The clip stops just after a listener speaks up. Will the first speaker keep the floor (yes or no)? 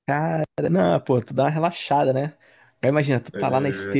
yes